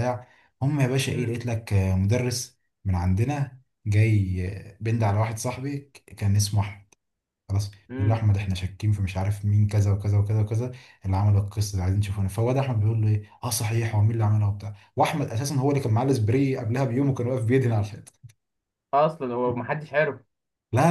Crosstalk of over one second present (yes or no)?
no